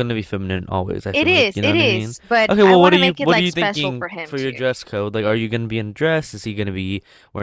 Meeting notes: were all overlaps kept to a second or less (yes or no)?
no